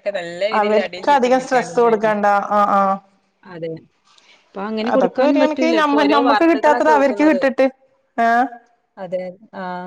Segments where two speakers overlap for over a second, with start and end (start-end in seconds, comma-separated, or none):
0.6-2.1, 4.9-7.4